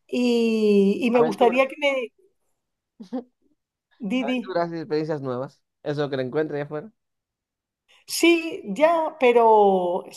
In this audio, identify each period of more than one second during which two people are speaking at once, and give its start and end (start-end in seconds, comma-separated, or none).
none